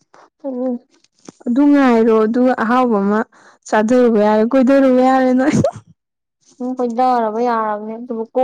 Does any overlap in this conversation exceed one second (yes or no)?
no